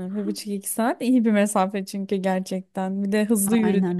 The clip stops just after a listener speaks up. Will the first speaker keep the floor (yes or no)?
yes